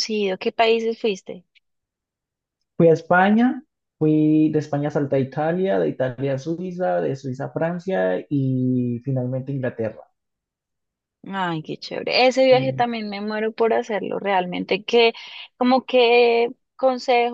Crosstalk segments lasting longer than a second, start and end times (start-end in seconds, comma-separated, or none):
none